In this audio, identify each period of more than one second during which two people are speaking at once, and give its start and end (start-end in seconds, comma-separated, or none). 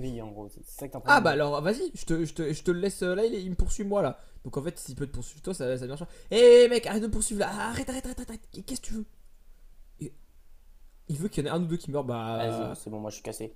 none